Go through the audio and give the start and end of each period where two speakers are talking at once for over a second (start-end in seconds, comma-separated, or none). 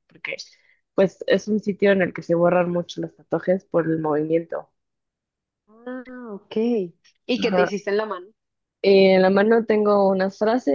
none